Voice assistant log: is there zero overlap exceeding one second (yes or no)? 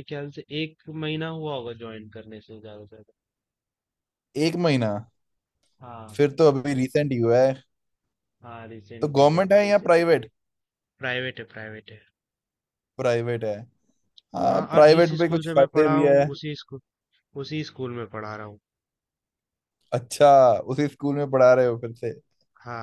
no